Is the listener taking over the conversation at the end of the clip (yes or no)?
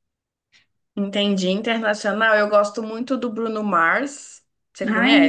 yes